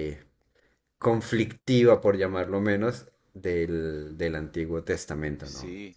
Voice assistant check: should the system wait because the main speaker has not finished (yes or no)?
no